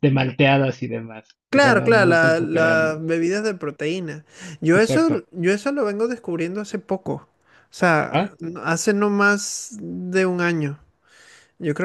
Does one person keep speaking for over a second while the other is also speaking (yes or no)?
yes